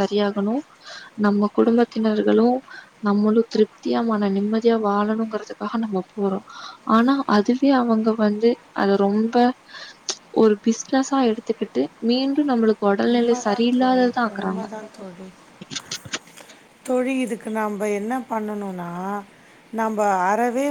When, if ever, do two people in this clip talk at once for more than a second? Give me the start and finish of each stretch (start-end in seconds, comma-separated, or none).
13.1-14.6